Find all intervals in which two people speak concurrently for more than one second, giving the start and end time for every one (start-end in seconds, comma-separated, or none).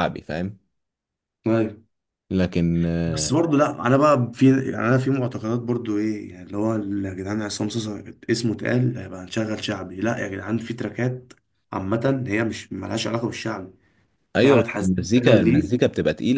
14.4-15.8